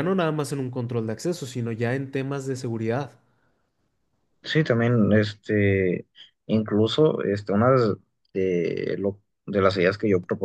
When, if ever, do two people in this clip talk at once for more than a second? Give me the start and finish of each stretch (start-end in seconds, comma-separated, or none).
none